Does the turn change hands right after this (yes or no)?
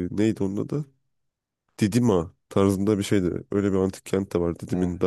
no